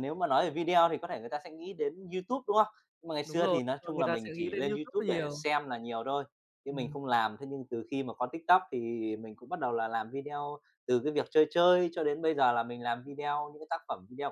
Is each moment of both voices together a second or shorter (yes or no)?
no